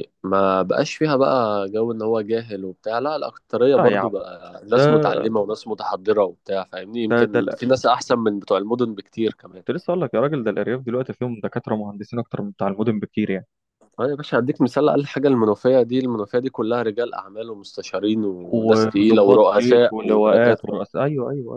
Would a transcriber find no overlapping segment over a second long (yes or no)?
no